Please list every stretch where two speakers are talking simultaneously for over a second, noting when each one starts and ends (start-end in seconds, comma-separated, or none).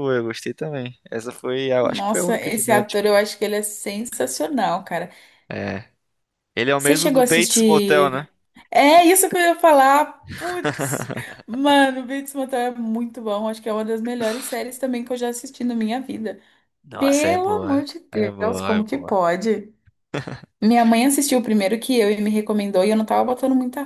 1.8-3.0, 6.8-8.3, 17.0-19.2